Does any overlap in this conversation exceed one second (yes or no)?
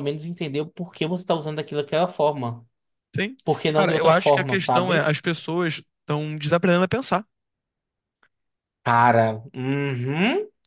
yes